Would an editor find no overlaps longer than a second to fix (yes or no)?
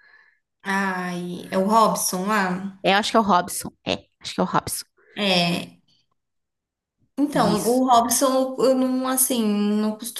yes